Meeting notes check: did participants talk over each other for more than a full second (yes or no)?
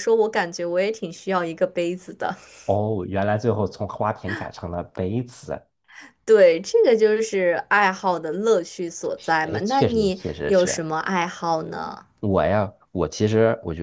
yes